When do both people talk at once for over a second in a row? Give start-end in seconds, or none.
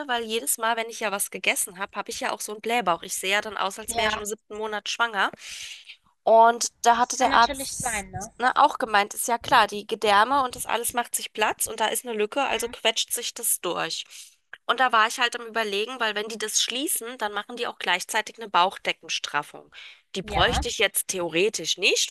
6.9-8.3